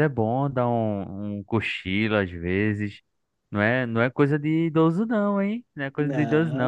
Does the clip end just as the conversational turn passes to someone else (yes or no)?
no